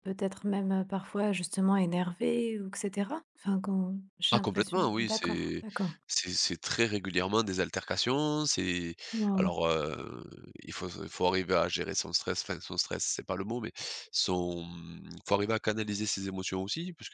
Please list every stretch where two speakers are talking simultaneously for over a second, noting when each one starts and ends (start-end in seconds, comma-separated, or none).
4.3-5.6